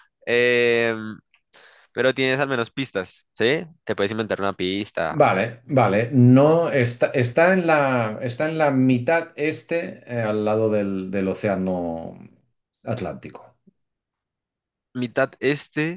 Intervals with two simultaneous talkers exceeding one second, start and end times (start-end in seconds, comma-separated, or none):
none